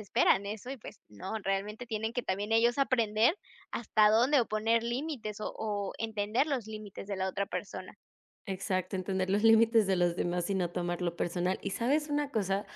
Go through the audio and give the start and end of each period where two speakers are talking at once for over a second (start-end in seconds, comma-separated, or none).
none